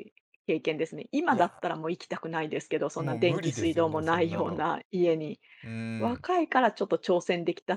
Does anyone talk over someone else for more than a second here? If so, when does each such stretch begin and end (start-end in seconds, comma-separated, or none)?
3.0-4.7